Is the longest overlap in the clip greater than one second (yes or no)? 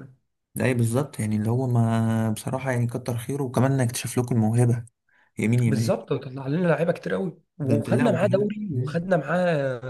yes